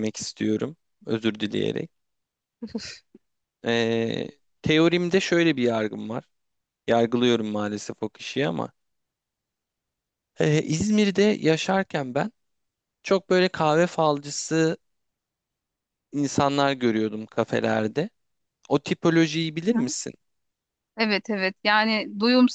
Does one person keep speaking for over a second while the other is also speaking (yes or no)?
no